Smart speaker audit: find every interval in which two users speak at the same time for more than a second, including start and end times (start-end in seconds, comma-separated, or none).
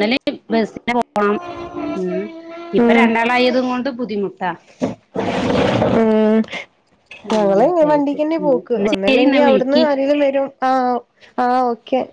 7.4-9.8